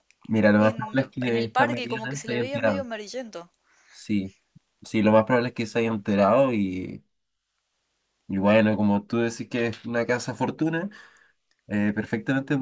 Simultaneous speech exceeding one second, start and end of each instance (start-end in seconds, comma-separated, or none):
0.5-2.9